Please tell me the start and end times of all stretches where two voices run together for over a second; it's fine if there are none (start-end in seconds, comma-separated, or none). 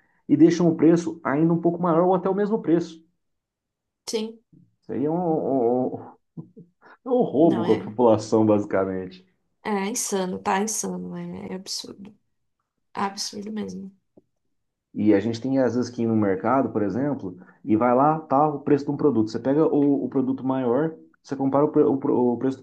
none